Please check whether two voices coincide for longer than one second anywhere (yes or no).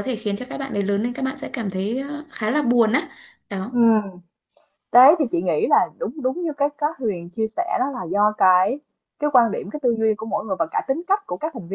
no